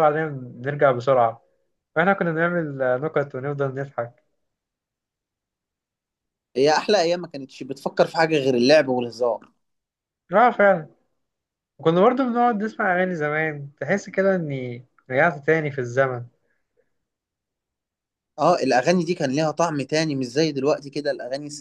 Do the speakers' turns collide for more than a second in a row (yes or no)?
no